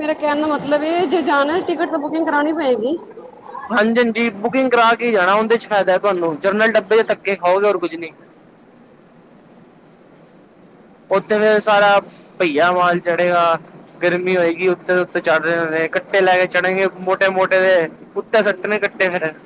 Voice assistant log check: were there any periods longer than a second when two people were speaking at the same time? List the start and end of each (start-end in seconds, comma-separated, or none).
none